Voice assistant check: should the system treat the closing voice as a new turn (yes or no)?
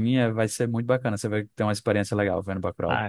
yes